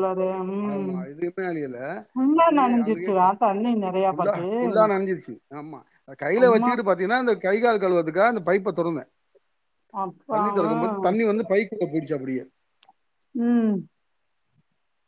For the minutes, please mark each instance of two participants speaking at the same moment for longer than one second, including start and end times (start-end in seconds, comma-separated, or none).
2.4-4.5